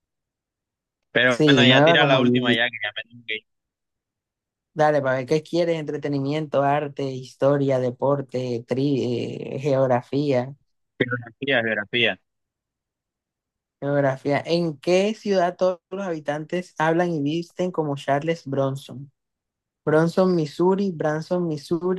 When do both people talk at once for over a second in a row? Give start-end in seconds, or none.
1.2-2.6